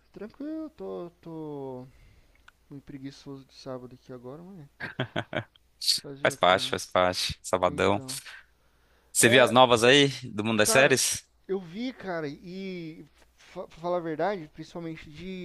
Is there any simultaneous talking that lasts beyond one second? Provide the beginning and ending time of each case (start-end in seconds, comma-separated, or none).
none